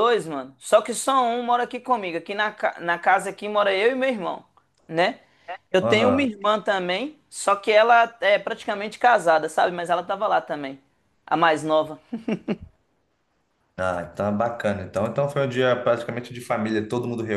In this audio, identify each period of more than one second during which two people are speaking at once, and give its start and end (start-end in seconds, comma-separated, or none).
none